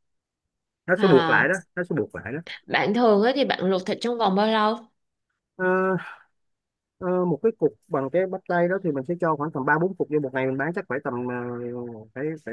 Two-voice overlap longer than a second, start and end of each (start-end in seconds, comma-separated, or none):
none